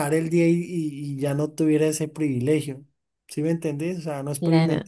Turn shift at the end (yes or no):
no